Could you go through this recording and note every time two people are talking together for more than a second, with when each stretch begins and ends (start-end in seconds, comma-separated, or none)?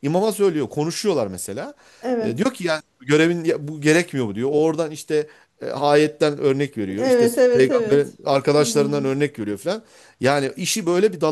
7.0-9.1